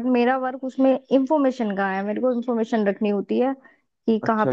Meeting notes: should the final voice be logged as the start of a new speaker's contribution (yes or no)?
yes